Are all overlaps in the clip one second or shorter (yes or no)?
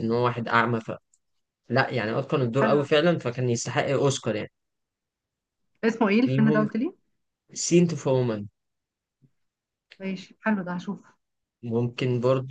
yes